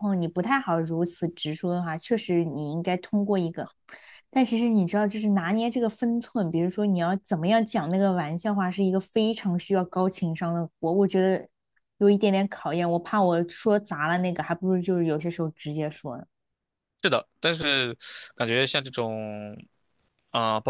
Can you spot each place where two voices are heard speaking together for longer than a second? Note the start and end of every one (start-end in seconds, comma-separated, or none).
none